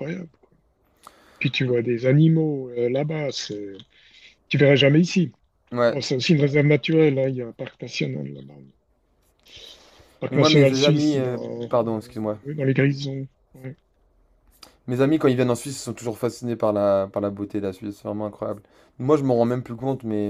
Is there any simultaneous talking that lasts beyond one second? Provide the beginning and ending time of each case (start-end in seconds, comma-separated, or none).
10.3-12.4